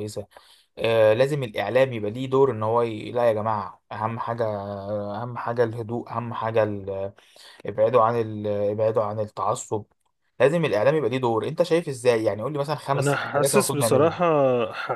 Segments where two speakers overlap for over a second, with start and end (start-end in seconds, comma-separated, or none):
12.9-14.2